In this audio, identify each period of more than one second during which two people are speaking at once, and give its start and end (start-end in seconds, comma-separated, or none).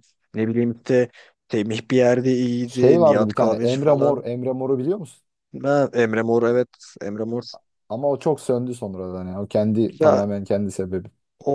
2.6-4.2